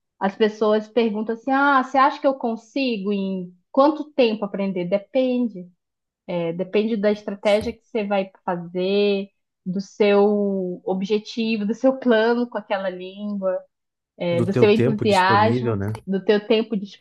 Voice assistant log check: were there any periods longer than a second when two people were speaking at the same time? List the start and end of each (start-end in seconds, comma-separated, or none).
14.3-15.9